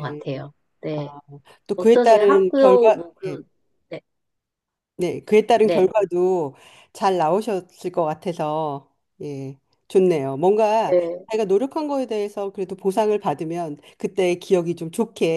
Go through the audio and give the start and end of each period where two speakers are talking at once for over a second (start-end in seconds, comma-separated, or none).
1.8-3.4